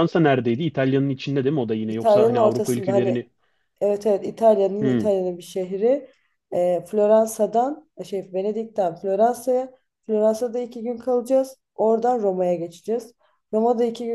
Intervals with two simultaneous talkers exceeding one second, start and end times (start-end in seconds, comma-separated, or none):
1.9-3.3